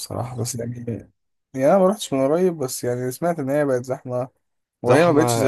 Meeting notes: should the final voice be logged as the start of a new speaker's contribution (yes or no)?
yes